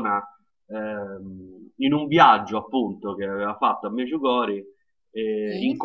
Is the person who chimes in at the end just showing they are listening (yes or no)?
yes